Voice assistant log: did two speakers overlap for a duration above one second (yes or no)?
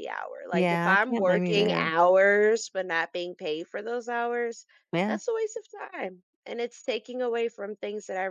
yes